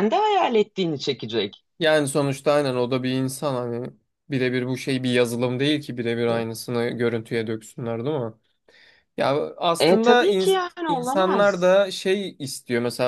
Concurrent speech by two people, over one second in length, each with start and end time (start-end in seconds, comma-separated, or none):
9.8-11.7